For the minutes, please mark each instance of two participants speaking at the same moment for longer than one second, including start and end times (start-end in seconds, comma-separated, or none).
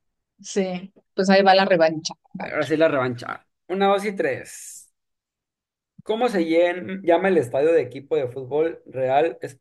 none